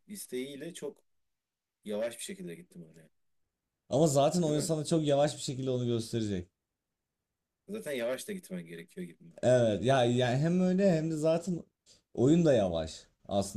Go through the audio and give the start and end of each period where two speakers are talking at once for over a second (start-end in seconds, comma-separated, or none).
none